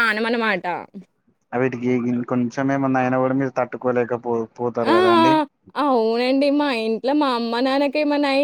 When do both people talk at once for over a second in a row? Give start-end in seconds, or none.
none